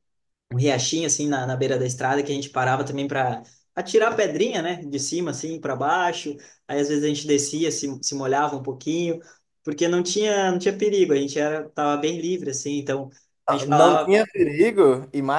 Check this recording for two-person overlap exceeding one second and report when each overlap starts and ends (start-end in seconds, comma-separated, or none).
none